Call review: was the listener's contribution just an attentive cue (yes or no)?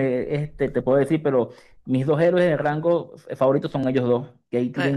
yes